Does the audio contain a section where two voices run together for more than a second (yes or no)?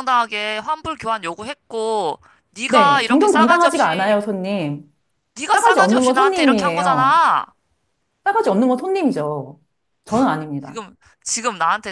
yes